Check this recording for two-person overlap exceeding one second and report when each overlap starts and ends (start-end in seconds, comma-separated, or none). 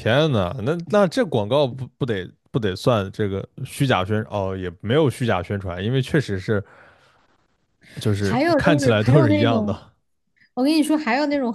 8.2-9.8